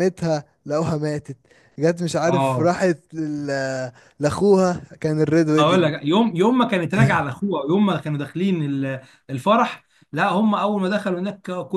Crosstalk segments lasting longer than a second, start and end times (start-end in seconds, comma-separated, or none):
none